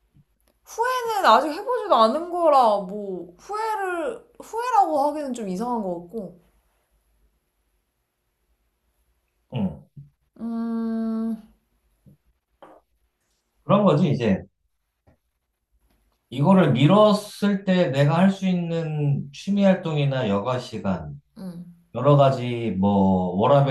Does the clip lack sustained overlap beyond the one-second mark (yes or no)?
yes